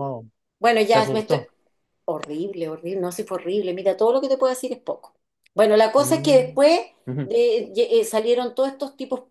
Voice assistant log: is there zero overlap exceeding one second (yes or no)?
yes